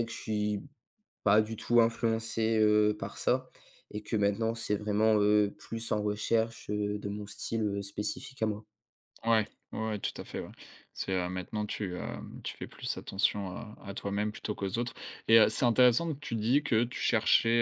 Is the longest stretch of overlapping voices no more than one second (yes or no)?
yes